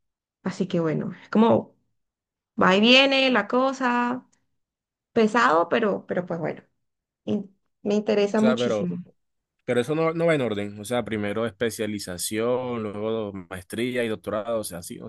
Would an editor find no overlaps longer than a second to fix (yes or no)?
yes